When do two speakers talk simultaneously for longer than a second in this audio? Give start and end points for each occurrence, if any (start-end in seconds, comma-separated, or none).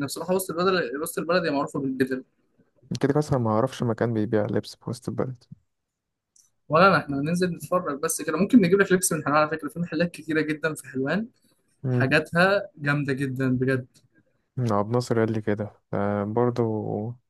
none